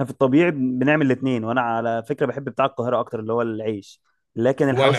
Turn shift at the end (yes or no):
no